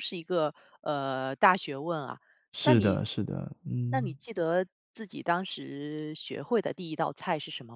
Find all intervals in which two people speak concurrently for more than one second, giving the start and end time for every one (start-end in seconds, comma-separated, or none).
none